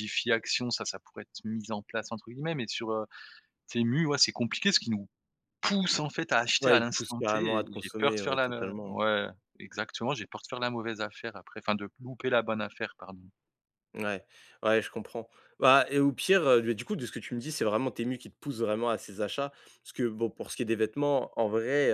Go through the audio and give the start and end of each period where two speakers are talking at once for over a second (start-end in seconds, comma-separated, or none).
6.6-9.0